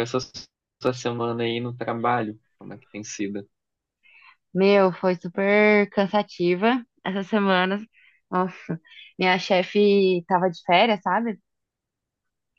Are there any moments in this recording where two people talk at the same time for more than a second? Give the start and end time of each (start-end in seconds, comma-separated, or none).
none